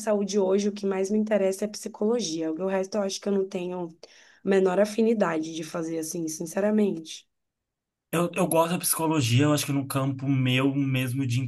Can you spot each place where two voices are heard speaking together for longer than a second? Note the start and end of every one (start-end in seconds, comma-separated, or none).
none